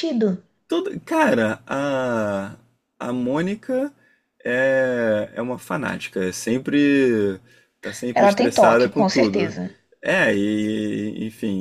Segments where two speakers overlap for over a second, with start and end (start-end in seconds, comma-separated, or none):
8.1-9.5